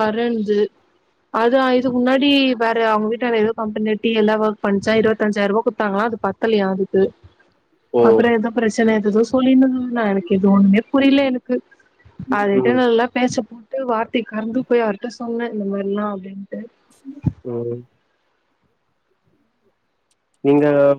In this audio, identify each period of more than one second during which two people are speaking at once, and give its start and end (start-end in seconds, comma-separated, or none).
none